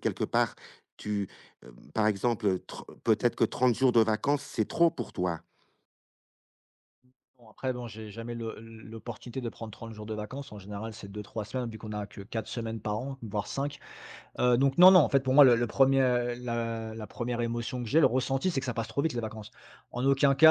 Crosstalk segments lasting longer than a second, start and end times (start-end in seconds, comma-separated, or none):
none